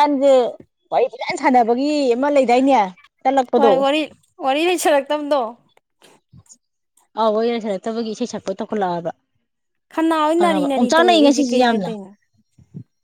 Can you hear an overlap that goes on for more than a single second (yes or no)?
yes